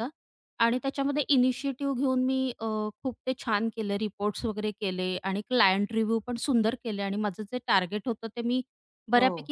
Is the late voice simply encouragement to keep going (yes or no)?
yes